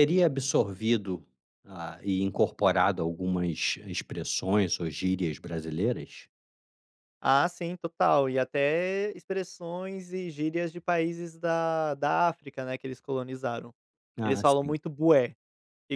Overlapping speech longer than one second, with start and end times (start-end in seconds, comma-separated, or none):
none